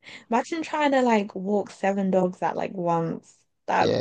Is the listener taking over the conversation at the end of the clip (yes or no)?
yes